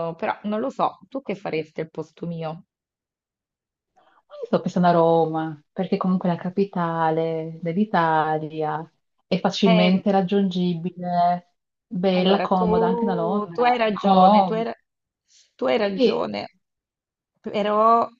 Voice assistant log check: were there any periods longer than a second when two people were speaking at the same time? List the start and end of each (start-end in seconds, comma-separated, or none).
12.1-14.7